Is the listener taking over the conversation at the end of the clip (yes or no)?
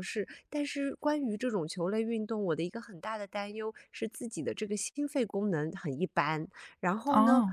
no